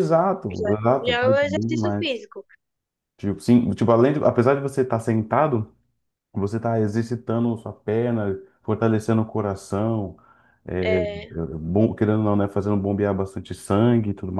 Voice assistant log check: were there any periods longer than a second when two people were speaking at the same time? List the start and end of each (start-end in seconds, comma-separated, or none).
0.6-2.2